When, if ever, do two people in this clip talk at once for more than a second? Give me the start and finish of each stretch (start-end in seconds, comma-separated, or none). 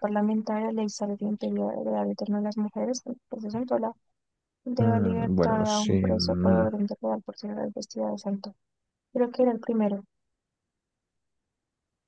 4.8-6.7